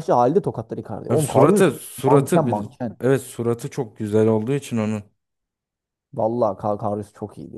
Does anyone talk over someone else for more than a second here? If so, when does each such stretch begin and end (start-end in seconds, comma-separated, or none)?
1.1-3.0